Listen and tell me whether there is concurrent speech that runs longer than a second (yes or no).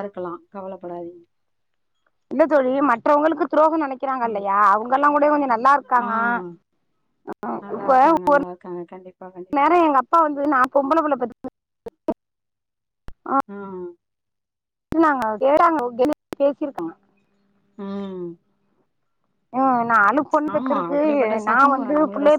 no